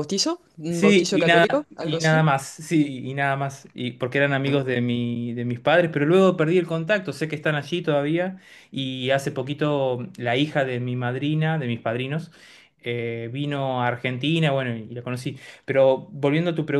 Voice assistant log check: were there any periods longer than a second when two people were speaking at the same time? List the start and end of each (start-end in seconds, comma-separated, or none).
0.7-2.3